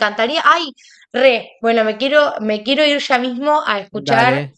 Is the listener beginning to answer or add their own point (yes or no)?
no